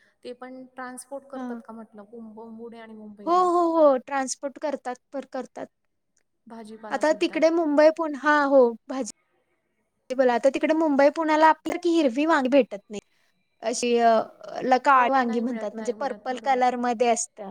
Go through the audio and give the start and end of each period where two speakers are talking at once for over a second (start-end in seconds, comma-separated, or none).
14.9-16.6